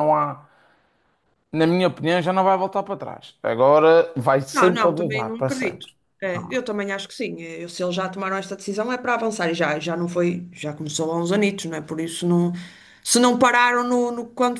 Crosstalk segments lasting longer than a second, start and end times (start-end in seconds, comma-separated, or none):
4.5-5.9